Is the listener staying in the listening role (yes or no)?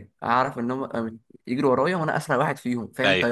yes